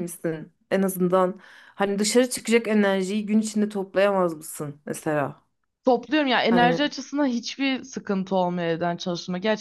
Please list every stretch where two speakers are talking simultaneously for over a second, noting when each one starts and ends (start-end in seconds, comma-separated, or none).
none